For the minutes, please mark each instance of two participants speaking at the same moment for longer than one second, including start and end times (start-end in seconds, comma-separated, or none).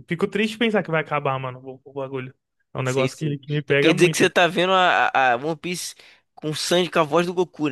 2.8-4.4